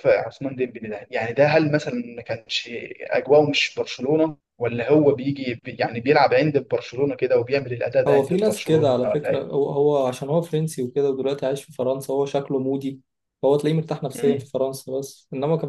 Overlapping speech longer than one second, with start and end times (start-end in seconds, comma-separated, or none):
8.1-9.5